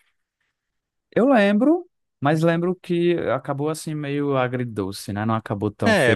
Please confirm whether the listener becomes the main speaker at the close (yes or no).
yes